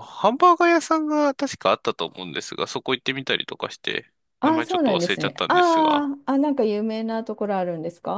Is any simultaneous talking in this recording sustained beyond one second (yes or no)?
yes